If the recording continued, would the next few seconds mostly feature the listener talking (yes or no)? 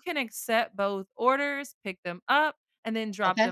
no